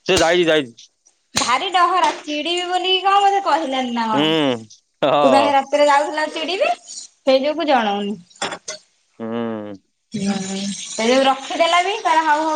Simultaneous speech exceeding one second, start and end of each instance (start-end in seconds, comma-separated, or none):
4.1-5.5